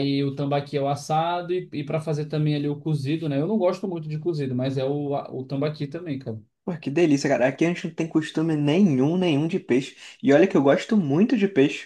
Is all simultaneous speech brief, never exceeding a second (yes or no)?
yes